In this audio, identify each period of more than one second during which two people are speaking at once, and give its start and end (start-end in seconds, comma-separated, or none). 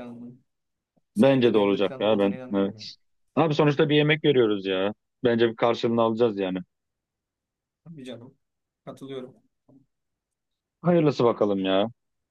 1.1-2.9